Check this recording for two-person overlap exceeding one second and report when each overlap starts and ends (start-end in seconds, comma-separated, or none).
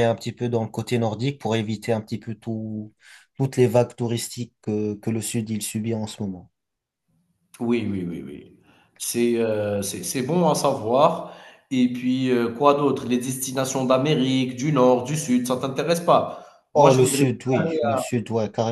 none